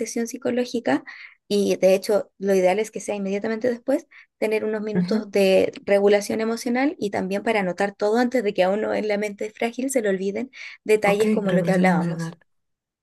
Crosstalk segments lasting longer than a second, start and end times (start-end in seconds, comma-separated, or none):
11.0-12.3